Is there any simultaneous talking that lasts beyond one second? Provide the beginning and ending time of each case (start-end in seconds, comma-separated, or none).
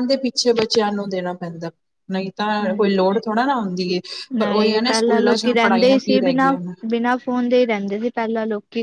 4.4-6.7